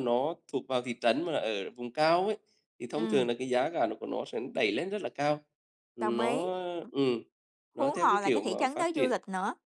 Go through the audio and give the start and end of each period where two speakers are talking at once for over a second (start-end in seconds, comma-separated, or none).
7.7-9.1